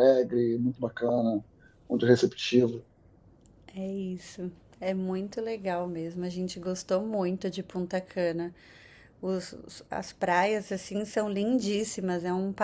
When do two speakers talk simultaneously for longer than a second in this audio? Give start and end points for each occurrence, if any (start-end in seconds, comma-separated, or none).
none